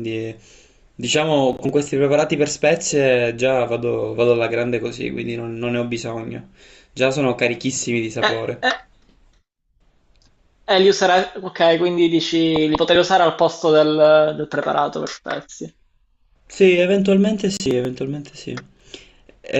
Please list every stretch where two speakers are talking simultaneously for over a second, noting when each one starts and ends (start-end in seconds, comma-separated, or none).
none